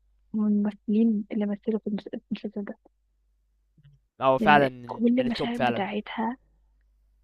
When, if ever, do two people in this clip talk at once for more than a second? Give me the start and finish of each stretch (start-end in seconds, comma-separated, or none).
4.4-5.9